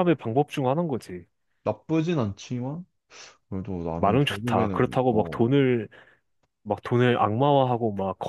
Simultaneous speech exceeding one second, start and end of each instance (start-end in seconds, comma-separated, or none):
4.0-5.4